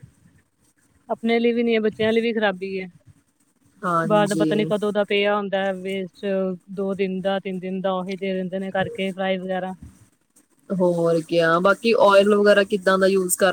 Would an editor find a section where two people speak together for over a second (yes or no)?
no